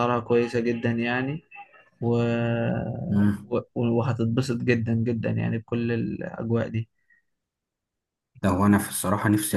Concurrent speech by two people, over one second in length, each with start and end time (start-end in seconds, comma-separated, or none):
none